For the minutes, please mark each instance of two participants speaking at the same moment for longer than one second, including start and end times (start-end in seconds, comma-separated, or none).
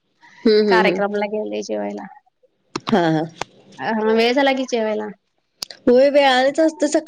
none